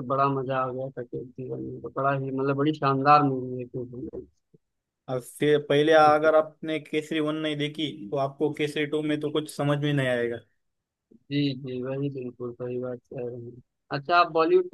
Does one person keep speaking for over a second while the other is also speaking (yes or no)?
no